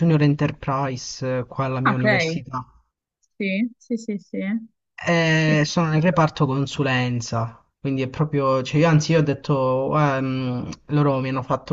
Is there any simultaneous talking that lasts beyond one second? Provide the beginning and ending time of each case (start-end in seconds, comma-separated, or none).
none